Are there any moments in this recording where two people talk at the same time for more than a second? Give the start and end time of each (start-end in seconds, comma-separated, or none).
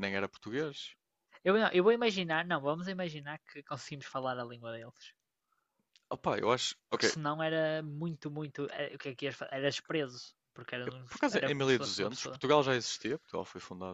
10.8-12.4